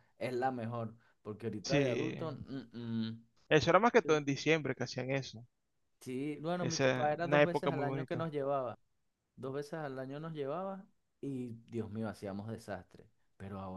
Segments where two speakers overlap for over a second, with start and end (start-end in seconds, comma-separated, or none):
6.6-8.3